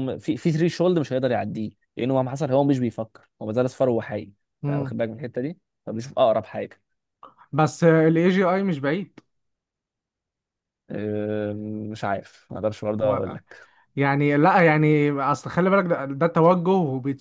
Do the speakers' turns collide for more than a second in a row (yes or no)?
no